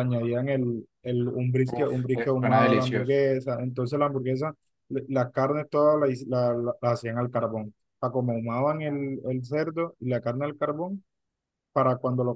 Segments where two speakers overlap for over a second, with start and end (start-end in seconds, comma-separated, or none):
1.7-3.2